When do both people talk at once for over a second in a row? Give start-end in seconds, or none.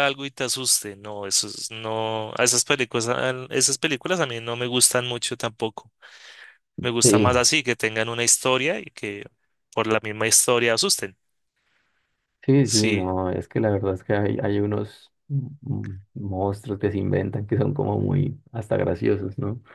none